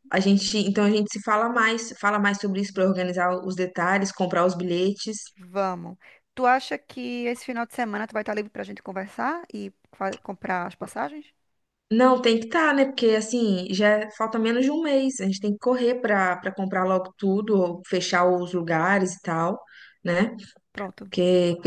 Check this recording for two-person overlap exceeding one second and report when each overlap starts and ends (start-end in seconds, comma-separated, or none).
none